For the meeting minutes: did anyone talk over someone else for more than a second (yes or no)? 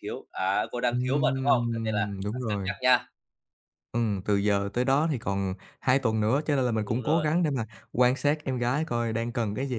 yes